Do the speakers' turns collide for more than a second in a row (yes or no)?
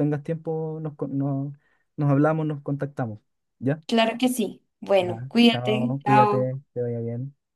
yes